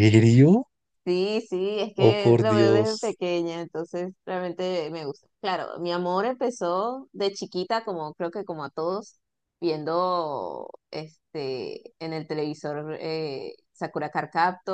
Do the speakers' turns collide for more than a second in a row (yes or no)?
yes